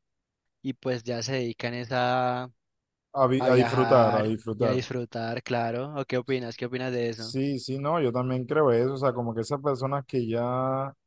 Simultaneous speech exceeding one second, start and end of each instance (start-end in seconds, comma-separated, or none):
3.4-4.8